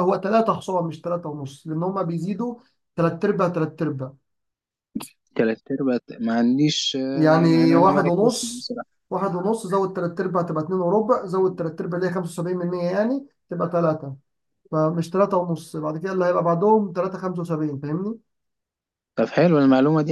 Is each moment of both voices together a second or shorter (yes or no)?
no